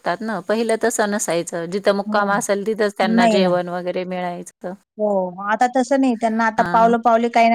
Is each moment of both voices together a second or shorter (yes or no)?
yes